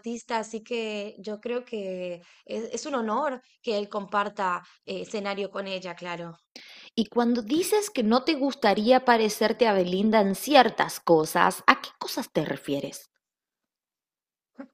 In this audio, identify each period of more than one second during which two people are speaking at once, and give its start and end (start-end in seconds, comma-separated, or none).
none